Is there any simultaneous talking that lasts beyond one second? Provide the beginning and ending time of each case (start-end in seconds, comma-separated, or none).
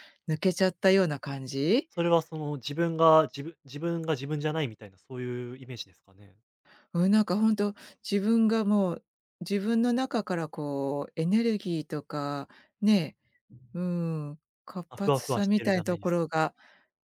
14.9-16.5